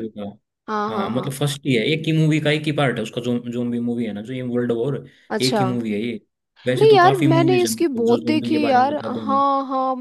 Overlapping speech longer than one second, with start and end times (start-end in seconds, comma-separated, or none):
6.8-9.4